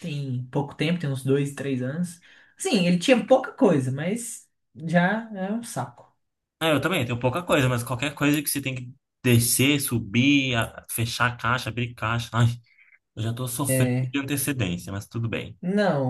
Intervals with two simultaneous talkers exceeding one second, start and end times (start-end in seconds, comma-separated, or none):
none